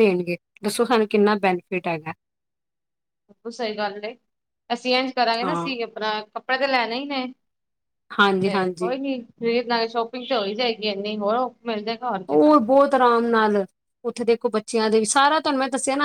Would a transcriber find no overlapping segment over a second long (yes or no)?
yes